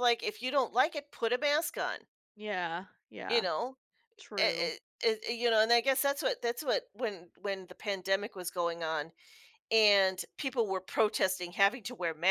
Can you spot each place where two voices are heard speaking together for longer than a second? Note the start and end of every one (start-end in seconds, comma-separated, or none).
none